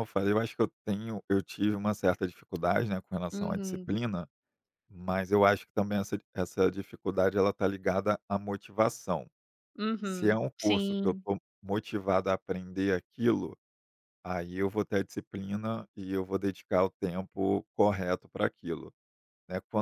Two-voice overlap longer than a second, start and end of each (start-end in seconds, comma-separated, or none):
10.0-11.2